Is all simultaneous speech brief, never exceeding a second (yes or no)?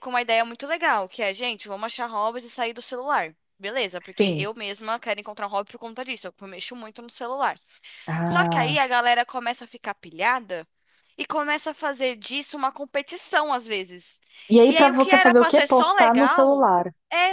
no